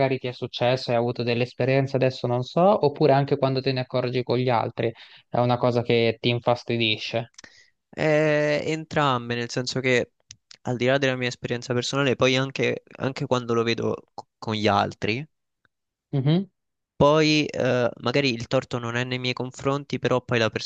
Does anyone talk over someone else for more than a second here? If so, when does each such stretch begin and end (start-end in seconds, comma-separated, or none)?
none